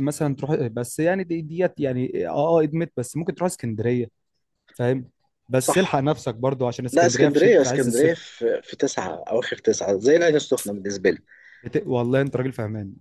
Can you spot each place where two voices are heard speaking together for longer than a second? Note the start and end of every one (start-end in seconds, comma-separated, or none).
6.9-8.2